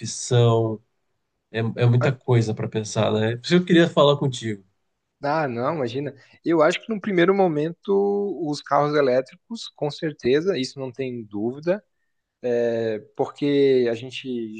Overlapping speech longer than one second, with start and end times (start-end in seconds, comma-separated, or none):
none